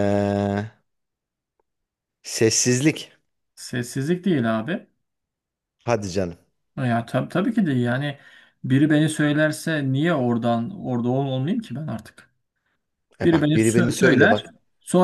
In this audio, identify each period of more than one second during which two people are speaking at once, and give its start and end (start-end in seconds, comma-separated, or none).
13.2-14.4